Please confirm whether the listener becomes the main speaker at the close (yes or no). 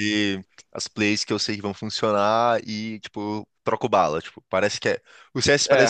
no